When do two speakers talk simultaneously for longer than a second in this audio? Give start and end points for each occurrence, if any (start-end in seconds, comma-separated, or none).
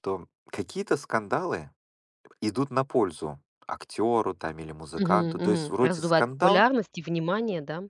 5.0-6.6